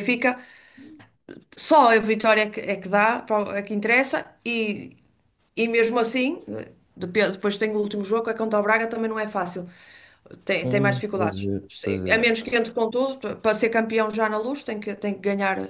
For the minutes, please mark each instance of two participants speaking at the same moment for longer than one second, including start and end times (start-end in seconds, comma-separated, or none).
10.6-12.4